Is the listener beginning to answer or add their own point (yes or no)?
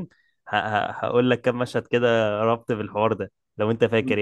yes